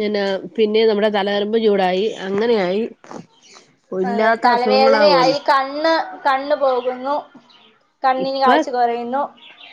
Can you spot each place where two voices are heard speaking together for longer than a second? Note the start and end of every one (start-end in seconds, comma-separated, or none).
4.1-5.4